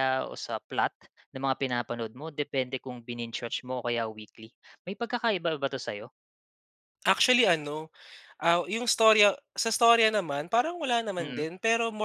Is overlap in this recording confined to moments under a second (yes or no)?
yes